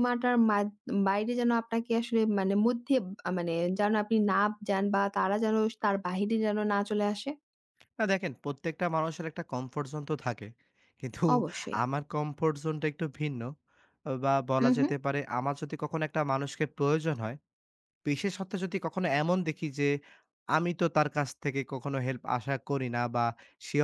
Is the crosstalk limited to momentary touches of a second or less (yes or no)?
yes